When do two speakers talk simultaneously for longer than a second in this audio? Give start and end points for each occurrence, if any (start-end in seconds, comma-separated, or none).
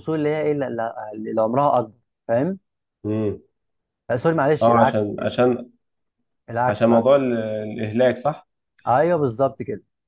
none